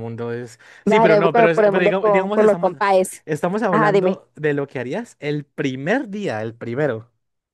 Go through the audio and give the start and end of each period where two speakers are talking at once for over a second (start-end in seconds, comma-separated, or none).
0.9-2.7